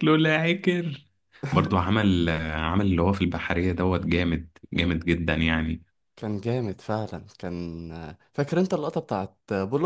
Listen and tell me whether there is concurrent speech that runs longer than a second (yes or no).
no